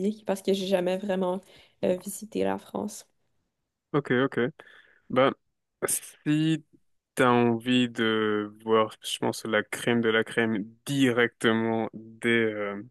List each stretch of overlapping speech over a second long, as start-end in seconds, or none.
none